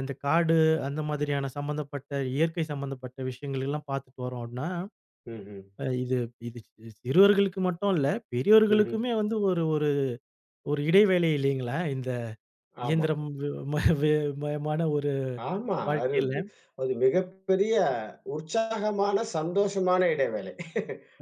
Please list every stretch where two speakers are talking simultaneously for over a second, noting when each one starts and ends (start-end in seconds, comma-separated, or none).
none